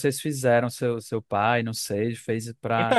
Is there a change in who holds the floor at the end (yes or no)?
yes